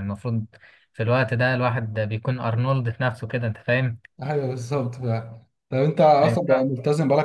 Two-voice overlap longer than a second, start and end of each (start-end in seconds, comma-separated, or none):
none